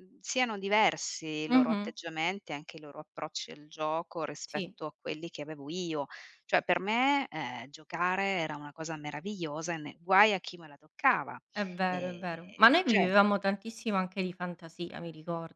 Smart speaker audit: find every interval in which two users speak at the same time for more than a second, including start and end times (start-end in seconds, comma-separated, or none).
11.8-13.1